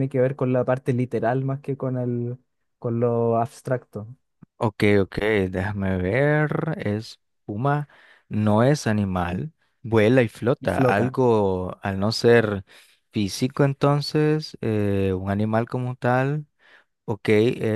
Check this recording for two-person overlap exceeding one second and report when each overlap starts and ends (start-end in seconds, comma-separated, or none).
none